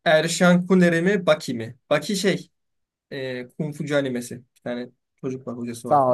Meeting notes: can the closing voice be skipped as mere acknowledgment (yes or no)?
no